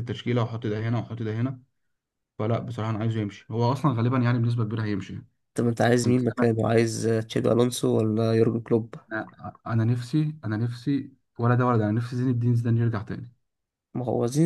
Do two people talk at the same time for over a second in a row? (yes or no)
no